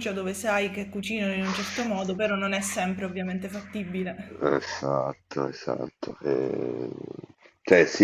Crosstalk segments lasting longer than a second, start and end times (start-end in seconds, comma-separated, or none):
none